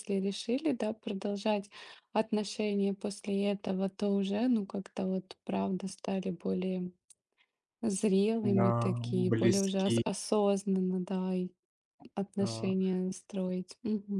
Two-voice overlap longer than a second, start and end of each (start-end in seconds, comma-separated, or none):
8.4-10.0